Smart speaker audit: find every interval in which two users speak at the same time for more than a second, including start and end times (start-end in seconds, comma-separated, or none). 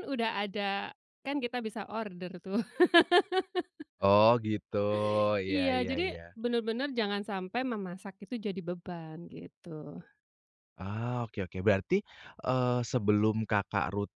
none